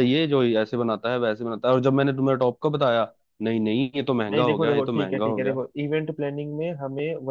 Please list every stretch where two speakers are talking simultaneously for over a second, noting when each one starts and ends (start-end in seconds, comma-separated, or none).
4.3-5.6